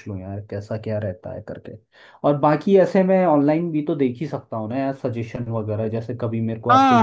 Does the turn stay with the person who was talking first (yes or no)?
no